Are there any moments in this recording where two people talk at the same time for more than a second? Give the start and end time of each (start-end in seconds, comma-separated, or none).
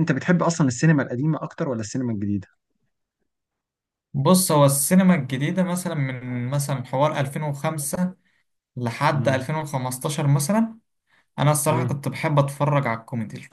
none